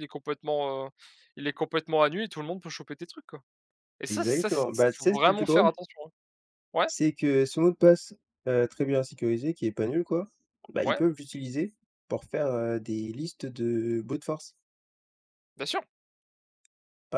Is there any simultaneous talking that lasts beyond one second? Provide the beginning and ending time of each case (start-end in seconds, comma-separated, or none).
4.1-5.7